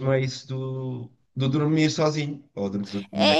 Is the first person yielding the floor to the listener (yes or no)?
yes